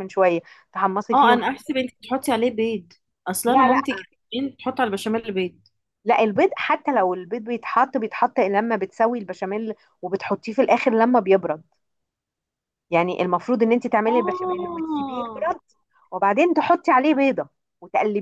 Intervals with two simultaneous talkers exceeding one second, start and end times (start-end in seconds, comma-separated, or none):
14.1-15.5